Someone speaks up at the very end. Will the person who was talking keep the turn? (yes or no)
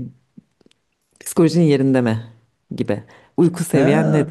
no